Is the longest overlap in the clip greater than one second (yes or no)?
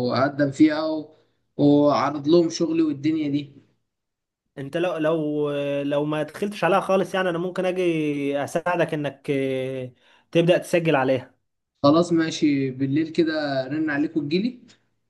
no